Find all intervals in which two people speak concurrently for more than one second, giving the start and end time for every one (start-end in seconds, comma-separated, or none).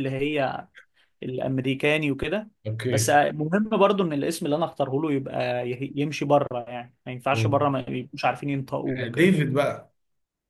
none